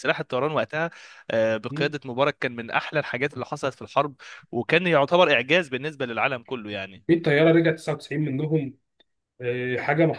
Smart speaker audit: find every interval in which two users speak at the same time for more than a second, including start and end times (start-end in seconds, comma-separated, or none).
none